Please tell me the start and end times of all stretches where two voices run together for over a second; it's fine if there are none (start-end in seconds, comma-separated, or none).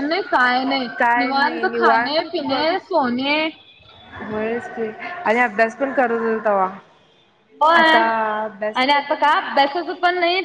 1.0-2.6